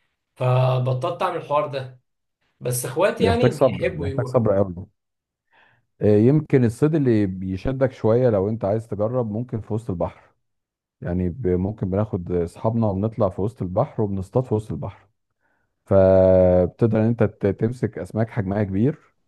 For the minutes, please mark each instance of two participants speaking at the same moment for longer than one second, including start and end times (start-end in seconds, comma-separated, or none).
3.2-4.5